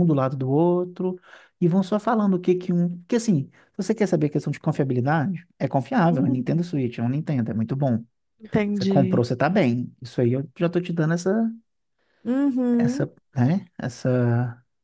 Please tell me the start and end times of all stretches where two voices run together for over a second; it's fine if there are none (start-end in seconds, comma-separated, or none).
none